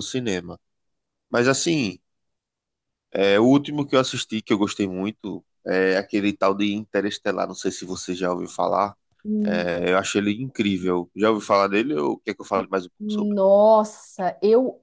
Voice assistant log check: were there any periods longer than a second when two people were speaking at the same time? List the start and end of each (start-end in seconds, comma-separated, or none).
none